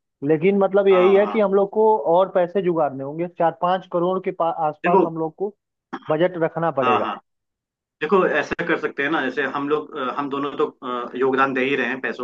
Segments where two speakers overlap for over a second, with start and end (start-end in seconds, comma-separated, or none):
none